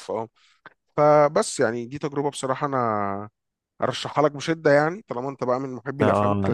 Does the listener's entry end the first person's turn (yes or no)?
yes